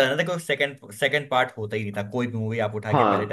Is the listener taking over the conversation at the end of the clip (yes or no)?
no